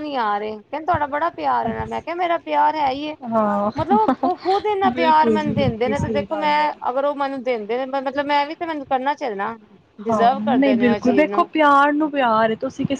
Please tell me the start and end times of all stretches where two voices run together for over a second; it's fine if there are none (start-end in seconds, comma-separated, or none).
4.9-6.7